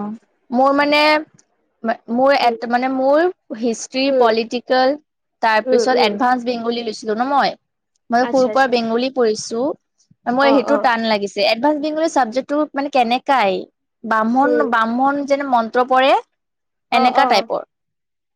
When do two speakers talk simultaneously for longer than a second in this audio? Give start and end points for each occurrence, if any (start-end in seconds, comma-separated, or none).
none